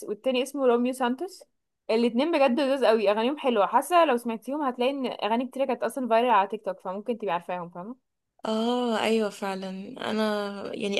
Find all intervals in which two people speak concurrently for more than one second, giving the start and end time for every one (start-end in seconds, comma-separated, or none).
none